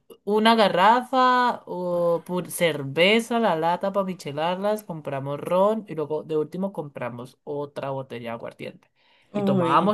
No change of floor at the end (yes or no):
yes